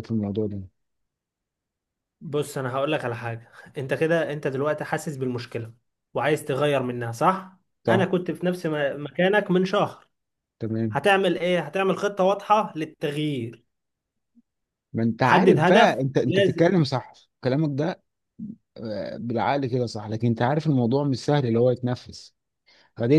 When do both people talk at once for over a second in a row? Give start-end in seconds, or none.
15.2-16.7